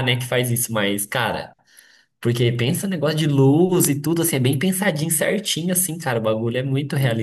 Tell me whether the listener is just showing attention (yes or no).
no